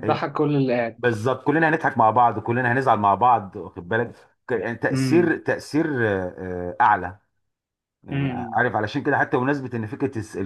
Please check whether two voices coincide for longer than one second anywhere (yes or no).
no